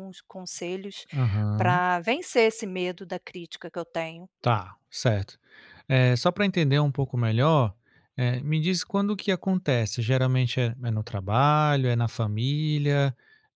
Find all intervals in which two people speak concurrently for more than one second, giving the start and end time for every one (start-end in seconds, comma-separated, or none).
none